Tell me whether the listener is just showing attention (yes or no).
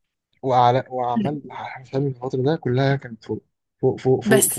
no